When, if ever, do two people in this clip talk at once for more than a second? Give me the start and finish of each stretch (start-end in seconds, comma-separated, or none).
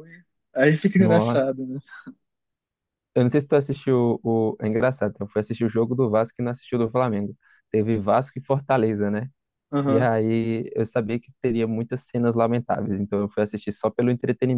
none